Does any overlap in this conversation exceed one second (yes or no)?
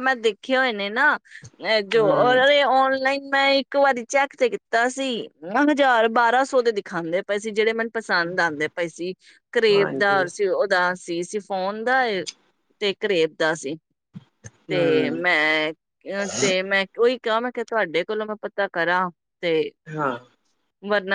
no